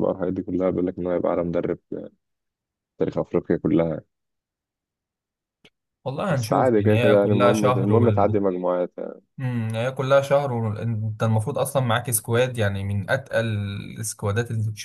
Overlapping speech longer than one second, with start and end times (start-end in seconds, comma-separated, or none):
6.3-8.4